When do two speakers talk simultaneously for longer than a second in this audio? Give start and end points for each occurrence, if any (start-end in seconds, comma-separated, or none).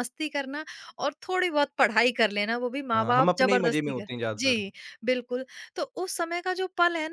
2.9-4.6